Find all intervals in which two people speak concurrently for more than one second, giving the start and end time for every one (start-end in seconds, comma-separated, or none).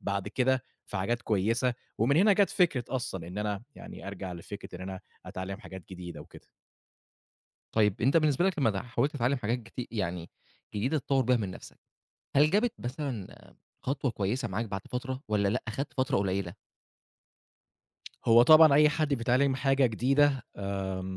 none